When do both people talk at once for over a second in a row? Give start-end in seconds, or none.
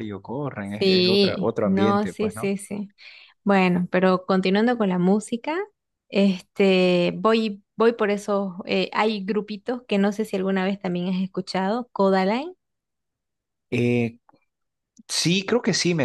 0.8-2.5